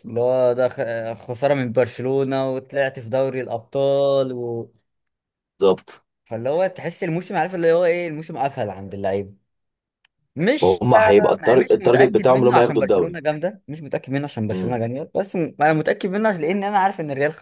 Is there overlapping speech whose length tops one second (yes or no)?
yes